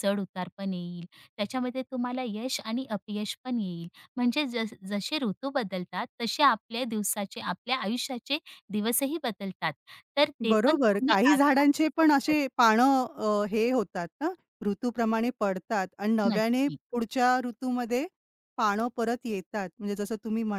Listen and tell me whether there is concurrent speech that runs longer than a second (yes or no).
yes